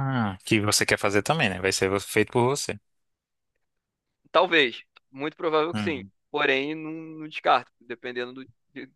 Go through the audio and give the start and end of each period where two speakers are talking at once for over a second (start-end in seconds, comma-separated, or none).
none